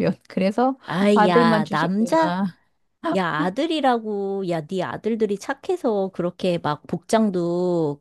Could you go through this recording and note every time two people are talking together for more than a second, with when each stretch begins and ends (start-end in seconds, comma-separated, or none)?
1.1-2.3